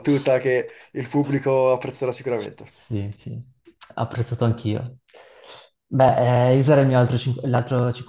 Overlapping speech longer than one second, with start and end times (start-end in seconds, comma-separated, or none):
none